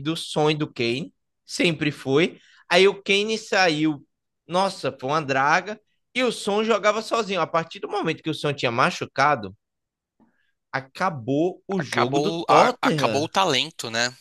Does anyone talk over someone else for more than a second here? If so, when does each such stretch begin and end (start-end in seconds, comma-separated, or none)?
11.8-13.3